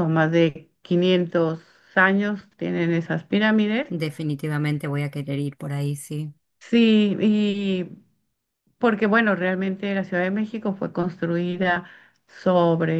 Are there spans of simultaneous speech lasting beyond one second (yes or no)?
no